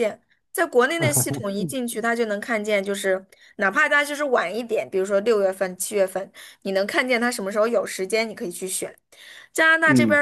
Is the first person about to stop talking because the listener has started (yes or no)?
no